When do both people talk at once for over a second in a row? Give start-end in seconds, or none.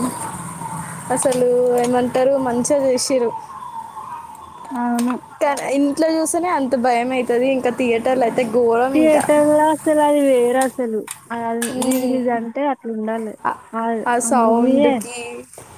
none